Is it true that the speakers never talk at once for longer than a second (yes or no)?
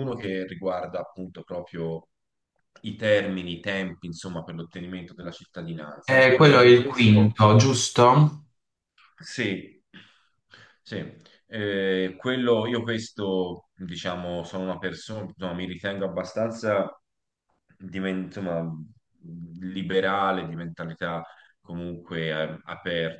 no